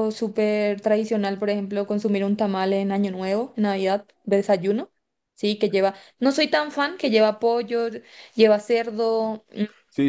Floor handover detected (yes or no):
yes